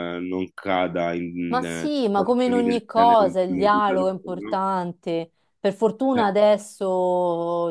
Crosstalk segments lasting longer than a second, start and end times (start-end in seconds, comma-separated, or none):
1.5-4.6